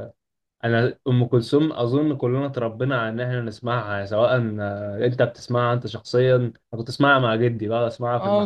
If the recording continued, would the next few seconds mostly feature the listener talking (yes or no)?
yes